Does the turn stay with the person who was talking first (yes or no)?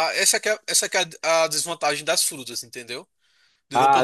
no